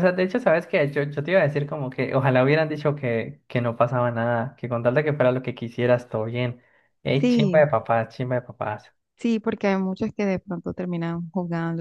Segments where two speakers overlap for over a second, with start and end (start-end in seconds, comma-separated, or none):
none